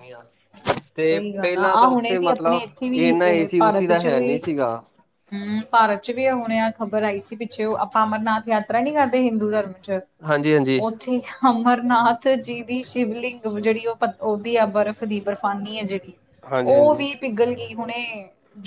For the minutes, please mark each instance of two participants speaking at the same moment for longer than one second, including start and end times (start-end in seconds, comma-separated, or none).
1.1-3.1